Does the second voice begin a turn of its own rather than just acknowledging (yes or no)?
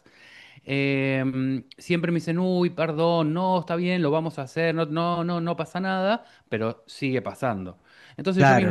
no